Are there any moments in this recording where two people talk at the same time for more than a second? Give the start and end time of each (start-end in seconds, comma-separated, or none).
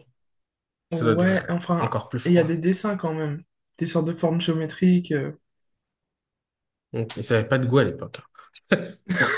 0.9-2.5